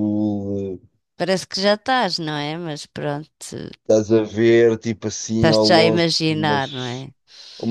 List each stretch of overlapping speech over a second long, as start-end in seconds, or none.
5.3-7.0